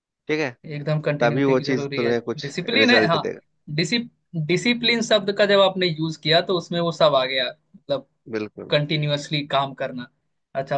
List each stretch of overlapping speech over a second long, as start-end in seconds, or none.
1.2-3.2